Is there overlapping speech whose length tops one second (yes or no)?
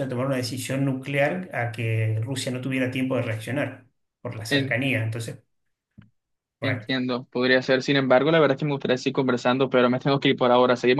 no